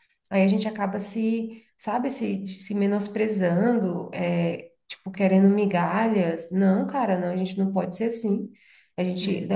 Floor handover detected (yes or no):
no